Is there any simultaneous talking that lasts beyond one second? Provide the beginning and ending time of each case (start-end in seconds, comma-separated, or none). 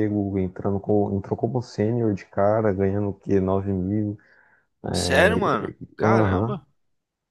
4.9-6.6